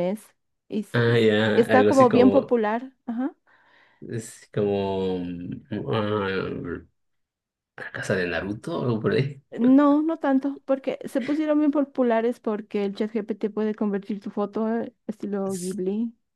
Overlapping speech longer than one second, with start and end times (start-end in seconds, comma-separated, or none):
0.9-2.6